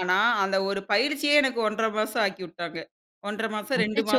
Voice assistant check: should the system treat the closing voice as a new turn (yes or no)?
yes